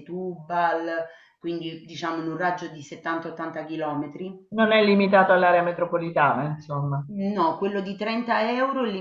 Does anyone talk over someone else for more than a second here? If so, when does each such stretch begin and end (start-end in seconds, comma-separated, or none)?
none